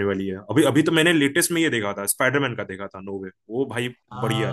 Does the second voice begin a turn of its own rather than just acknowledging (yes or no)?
yes